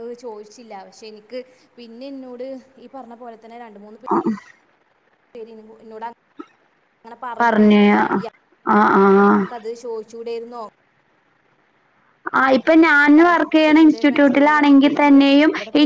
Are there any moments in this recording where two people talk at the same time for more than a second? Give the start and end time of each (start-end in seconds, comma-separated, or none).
13.6-15.2